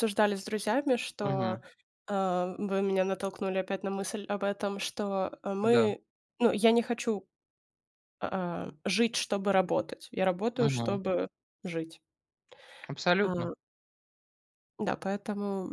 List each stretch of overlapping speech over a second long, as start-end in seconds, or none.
none